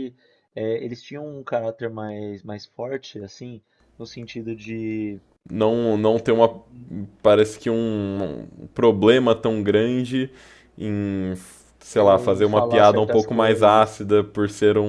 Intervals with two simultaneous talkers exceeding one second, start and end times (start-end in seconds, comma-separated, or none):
11.9-14.0